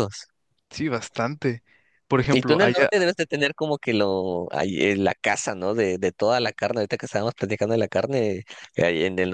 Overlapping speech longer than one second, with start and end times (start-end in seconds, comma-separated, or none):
none